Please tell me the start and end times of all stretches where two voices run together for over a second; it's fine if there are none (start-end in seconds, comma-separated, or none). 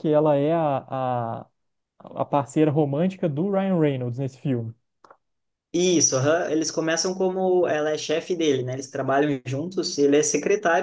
none